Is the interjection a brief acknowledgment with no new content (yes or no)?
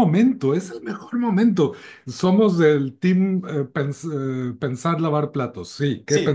no